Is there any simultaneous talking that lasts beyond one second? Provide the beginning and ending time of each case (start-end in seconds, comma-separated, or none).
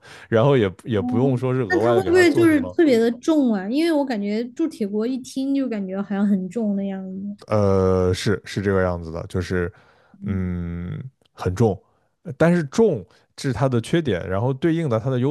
0.9-2.8